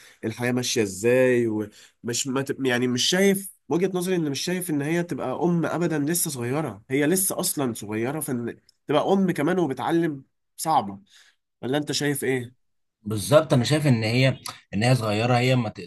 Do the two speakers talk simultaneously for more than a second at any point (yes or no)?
no